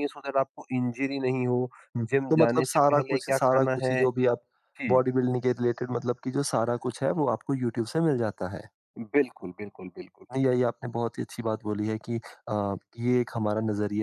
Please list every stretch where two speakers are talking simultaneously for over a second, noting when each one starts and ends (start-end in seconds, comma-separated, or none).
2.1-4.0